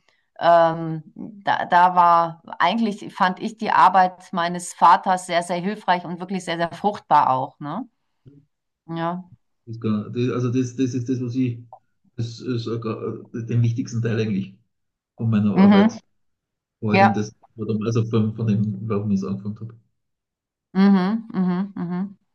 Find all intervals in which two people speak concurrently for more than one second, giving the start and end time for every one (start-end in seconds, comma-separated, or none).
none